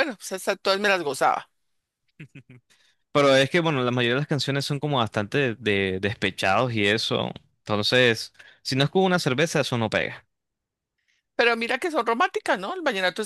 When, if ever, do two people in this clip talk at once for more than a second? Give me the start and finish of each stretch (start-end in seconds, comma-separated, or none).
none